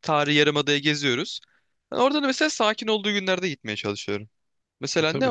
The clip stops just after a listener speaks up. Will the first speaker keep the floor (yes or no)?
yes